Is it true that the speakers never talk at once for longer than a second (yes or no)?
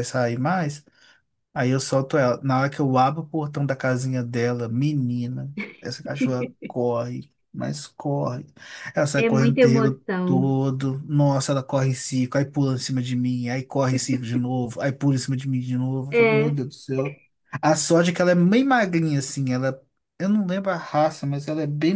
no